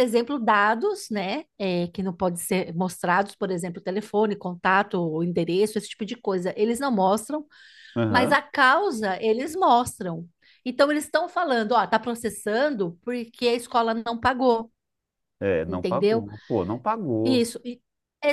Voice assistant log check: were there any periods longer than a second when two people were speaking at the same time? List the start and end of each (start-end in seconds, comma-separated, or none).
none